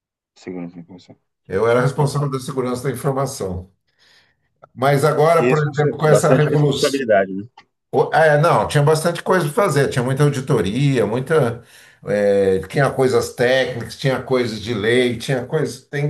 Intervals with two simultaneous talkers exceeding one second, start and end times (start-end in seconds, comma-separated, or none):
5.3-7.0